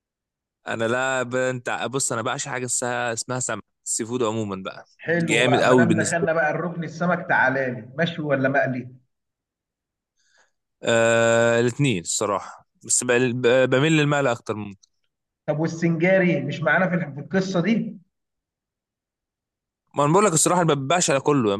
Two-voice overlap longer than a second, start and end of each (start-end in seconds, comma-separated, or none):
5.0-6.4